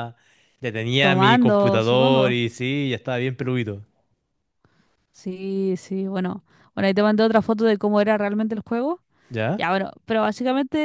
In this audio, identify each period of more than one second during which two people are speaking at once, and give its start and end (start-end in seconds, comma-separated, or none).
1.0-2.3